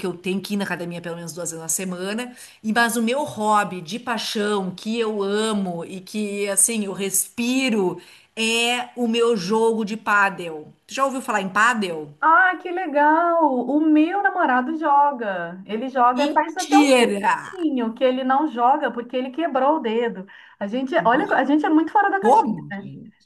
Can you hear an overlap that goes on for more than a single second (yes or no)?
yes